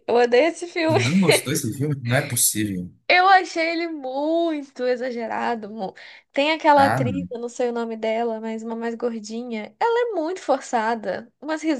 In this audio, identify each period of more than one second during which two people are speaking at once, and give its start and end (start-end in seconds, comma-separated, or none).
none